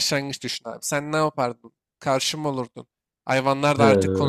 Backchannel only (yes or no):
yes